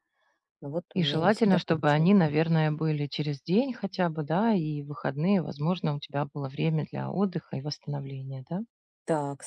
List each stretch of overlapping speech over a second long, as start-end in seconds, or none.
0.9-2.1